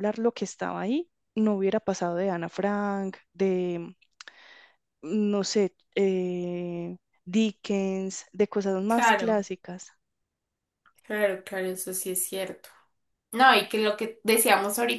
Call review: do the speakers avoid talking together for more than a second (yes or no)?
yes